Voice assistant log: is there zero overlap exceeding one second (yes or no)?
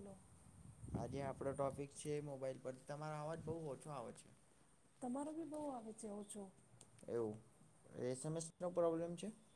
yes